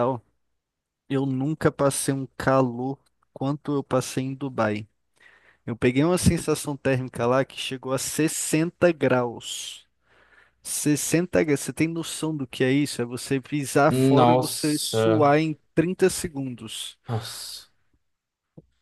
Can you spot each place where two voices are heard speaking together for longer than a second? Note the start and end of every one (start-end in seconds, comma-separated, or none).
13.9-15.3